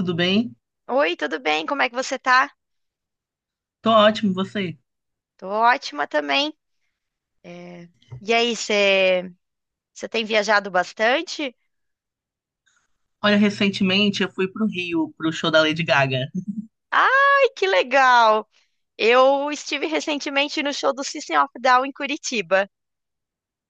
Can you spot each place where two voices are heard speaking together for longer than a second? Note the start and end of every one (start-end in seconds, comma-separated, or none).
none